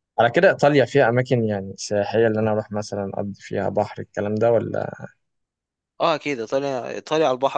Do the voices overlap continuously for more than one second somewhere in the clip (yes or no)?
no